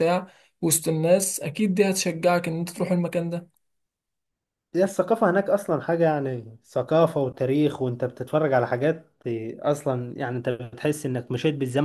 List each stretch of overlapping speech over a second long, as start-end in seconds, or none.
none